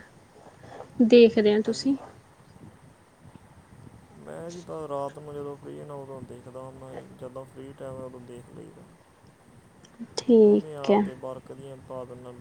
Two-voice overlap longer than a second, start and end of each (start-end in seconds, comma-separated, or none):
none